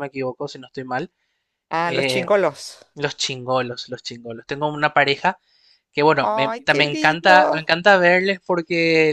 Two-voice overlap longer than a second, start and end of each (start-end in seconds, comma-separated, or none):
6.2-7.6